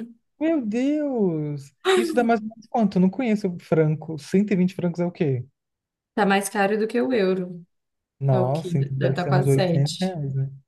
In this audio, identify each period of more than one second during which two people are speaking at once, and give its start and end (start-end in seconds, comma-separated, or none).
8.3-10.2